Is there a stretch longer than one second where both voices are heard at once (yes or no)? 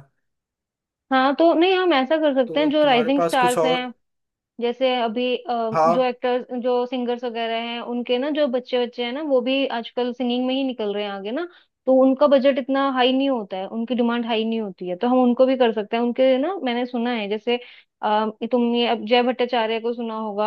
yes